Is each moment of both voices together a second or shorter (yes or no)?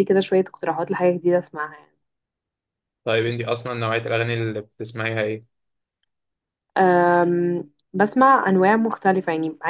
yes